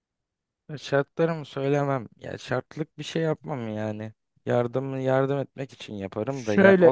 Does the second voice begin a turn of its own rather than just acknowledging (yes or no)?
no